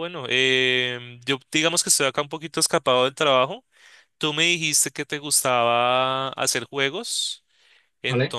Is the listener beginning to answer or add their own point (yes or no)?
no